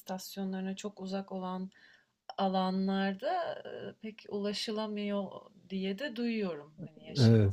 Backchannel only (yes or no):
no